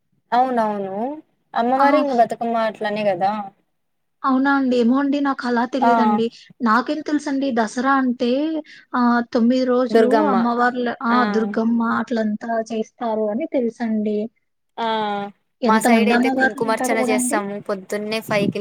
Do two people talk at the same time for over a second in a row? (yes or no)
yes